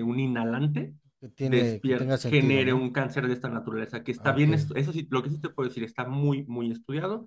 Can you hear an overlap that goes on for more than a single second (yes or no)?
yes